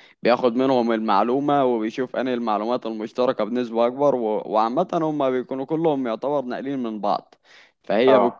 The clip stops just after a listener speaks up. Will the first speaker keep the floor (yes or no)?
yes